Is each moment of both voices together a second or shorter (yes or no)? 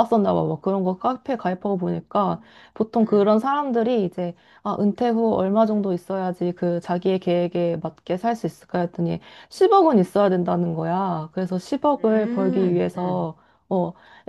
no